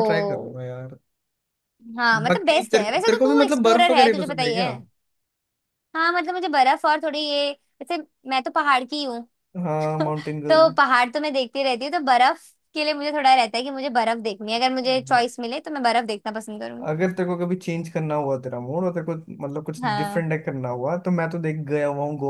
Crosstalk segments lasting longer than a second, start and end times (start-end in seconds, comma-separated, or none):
2.3-4.7